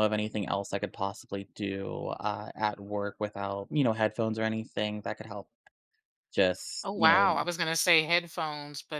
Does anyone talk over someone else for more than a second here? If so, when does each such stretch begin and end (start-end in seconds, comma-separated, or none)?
none